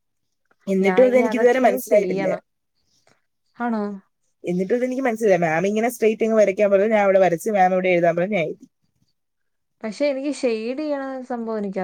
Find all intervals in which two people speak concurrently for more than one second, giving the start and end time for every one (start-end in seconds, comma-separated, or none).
0.8-2.4